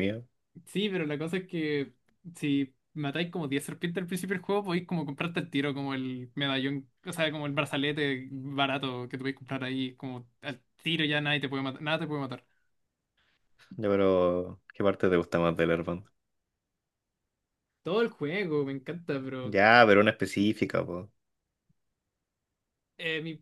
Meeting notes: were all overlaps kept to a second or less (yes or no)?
yes